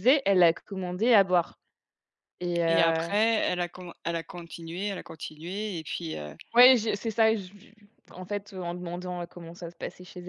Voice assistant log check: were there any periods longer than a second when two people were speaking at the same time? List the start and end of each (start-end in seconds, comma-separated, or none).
none